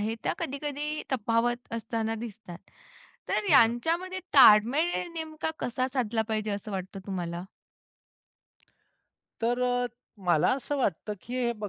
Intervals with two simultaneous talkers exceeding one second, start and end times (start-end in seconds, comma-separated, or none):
none